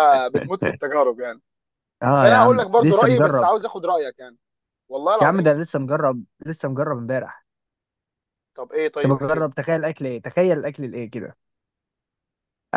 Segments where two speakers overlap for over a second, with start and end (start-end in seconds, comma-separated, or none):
2.2-3.5